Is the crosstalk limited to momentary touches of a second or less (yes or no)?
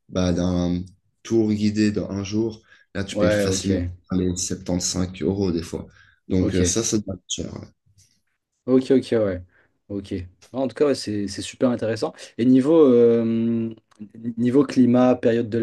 yes